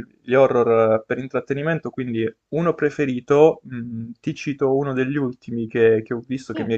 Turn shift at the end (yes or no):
no